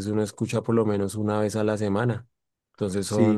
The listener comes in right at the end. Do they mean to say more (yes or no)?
yes